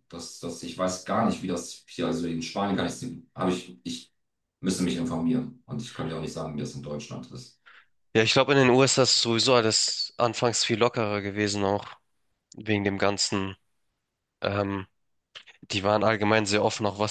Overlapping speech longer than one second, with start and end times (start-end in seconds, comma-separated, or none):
none